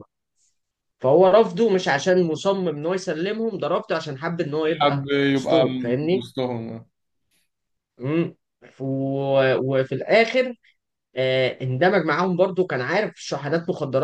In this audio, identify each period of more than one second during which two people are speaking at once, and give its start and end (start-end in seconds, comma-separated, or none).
4.6-6.2